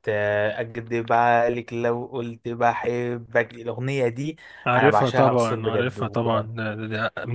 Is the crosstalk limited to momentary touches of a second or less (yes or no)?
no